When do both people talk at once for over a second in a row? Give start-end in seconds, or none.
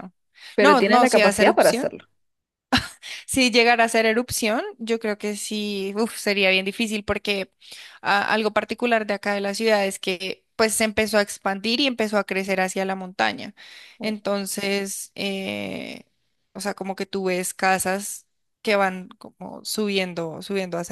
0.6-1.9